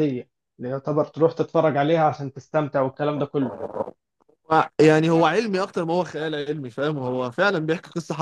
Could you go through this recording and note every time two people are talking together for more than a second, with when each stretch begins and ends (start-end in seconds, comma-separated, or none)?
none